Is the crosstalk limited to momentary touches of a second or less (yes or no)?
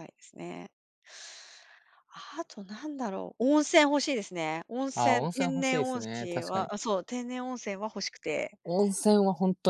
no